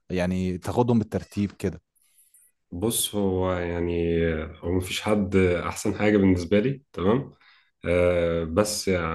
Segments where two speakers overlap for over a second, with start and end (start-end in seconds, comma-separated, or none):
none